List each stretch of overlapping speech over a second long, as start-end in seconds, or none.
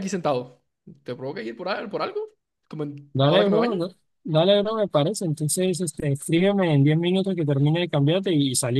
none